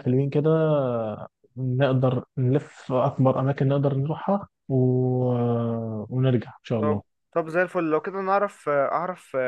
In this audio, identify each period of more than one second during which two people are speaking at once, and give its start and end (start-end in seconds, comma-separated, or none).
none